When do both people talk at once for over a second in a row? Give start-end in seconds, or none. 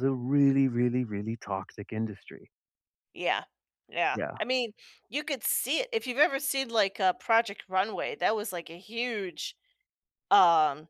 none